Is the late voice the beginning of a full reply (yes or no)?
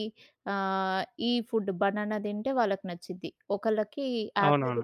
no